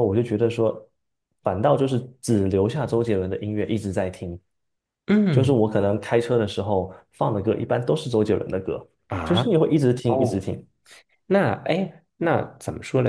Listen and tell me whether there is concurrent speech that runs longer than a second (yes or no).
no